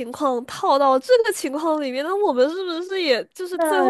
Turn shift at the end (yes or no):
yes